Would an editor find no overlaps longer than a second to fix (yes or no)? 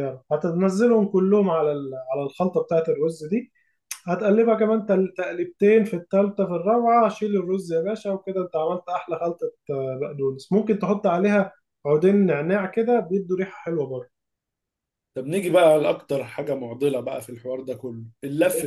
yes